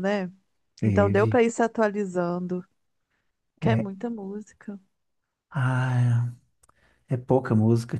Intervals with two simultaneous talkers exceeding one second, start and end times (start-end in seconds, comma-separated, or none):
none